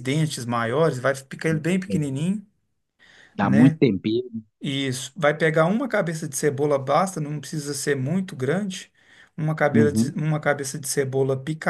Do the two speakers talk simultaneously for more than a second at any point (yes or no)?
no